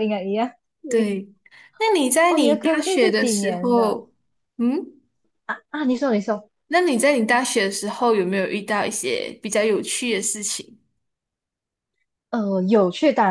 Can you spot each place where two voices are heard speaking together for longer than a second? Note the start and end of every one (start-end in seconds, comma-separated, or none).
2.3-4.0